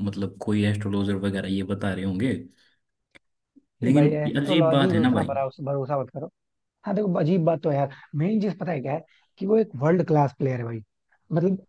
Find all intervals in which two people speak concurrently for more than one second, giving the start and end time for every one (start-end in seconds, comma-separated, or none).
3.8-5.3